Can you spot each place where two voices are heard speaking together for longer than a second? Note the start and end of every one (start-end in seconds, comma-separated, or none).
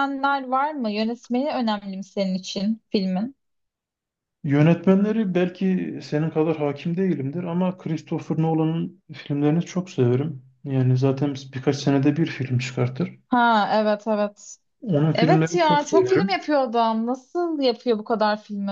15.1-16.4